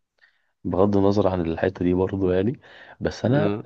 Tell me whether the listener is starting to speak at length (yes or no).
no